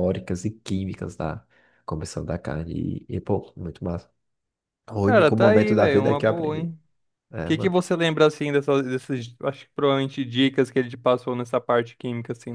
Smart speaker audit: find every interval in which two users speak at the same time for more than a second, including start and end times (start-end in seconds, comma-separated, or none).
5.0-6.7